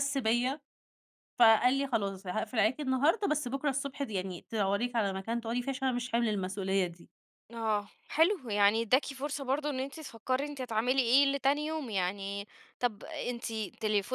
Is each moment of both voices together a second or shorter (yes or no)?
yes